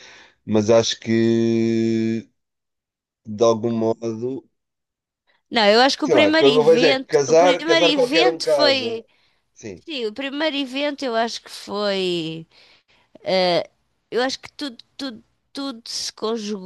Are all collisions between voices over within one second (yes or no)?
no